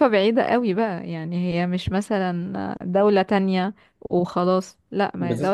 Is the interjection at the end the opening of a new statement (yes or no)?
no